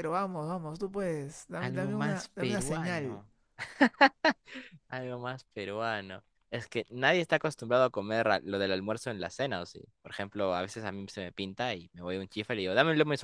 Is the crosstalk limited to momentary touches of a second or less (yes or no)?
no